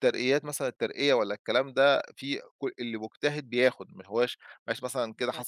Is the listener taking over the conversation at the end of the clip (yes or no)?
no